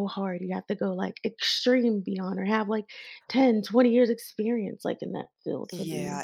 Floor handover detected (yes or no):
yes